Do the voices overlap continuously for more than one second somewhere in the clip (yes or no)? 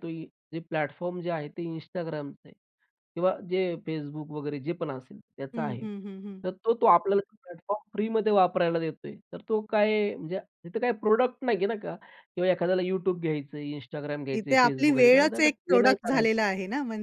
yes